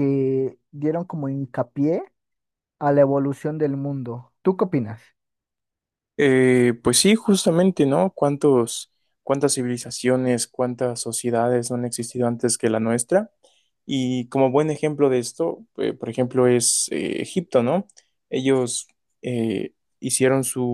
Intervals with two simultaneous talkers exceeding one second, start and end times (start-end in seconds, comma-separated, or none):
none